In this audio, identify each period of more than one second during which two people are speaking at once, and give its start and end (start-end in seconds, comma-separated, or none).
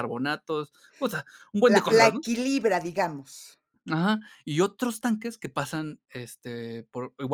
none